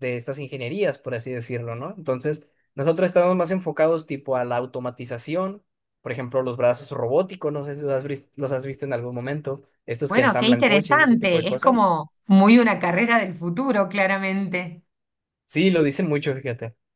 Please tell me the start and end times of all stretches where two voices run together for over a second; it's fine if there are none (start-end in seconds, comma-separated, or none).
10.1-11.9